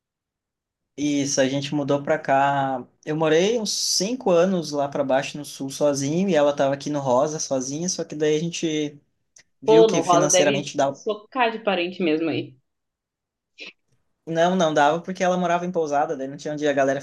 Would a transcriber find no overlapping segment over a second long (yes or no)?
no